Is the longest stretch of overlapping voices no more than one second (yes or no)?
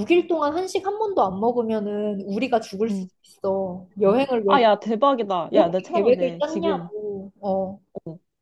no